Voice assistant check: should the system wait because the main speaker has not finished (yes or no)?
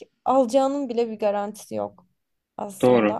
no